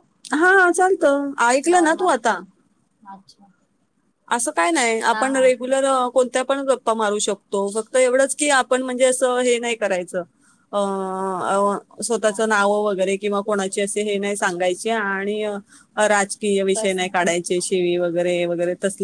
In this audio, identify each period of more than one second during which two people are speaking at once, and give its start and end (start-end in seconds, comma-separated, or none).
none